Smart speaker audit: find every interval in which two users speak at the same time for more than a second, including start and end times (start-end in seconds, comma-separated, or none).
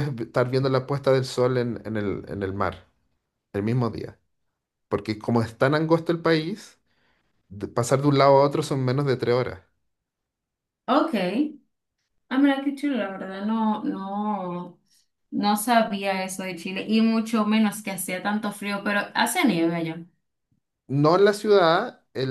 none